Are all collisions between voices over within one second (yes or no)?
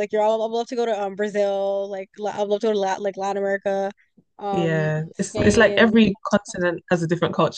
no